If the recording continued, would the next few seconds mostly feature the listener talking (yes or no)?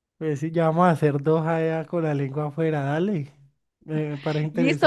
yes